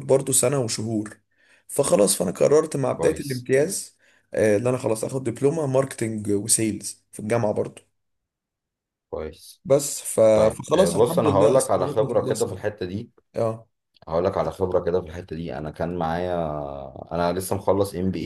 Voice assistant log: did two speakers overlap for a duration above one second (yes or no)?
yes